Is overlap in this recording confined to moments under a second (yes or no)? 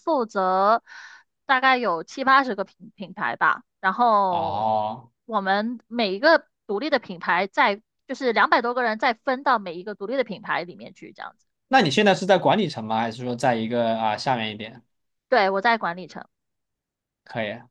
yes